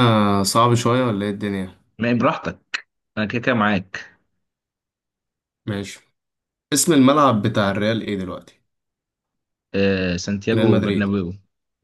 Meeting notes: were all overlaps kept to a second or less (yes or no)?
yes